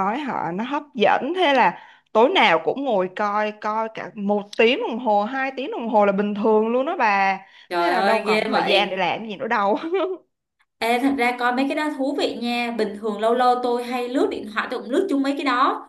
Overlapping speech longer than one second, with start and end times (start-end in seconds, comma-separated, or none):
7.8-9.0